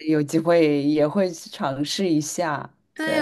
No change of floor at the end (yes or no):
no